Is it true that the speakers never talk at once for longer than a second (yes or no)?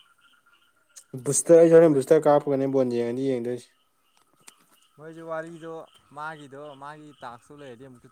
yes